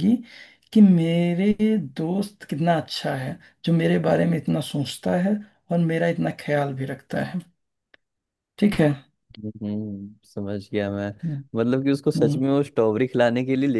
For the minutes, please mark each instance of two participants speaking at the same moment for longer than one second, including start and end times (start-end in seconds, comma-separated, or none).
none